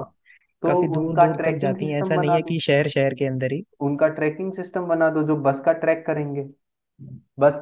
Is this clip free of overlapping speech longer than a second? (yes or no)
no